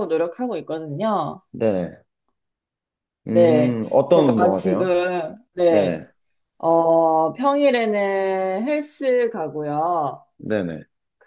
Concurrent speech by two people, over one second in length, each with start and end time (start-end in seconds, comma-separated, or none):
3.3-4.9